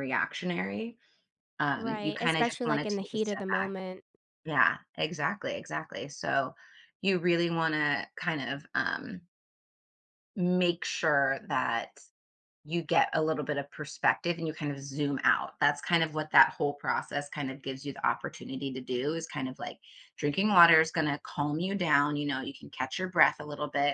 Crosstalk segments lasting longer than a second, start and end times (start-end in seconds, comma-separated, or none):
1.8-3.8